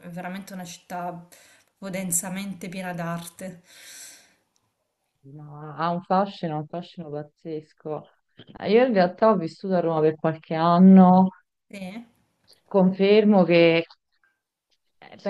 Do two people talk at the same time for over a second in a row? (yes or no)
no